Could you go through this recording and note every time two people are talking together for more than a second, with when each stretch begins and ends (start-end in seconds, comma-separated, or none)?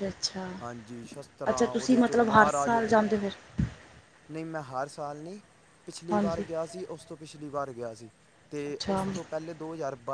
1.5-2.8